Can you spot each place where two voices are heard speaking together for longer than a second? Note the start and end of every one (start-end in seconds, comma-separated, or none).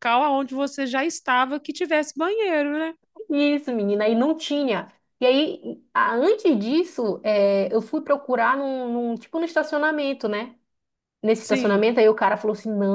none